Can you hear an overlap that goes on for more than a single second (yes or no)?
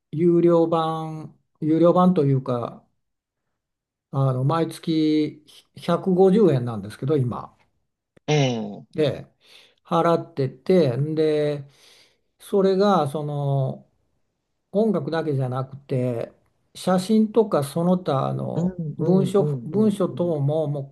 yes